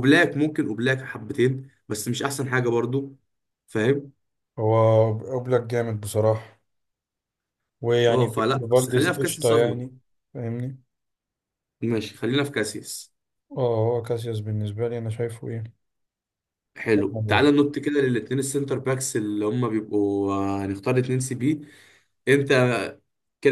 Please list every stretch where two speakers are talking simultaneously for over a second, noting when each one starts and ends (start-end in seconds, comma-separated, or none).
8.1-9.8